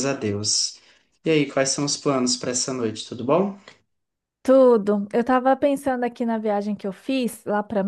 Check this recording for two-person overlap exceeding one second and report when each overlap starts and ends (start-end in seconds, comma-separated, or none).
none